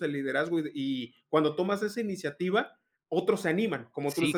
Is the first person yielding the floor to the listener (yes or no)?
yes